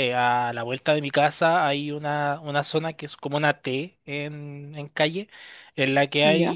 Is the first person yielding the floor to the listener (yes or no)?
no